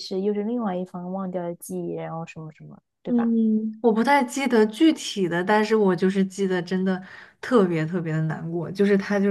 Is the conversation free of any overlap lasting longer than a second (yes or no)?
yes